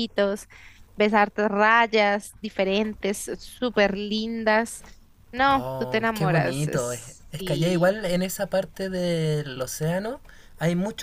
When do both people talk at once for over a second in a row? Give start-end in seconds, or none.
5.5-8.0